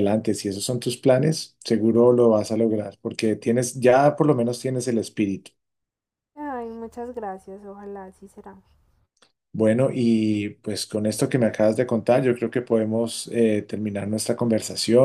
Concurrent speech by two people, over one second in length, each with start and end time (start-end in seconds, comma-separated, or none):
none